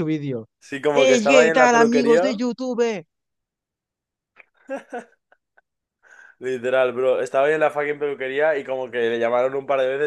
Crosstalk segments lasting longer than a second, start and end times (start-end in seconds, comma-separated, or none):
0.9-2.4